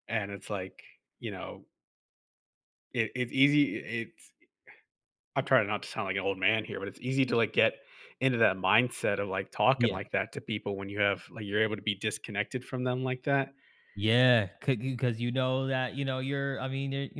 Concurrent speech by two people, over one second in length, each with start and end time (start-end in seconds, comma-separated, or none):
none